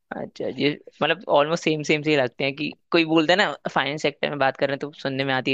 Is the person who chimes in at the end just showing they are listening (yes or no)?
yes